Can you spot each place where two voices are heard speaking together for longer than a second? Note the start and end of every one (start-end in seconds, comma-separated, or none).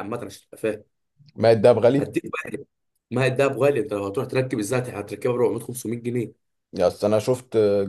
none